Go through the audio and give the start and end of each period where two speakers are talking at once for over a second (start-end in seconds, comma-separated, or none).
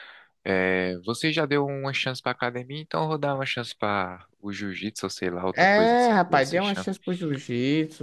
5.5-6.9